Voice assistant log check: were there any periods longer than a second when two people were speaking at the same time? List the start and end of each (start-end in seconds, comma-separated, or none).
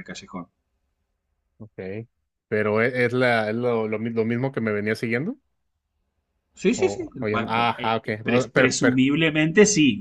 6.7-9.0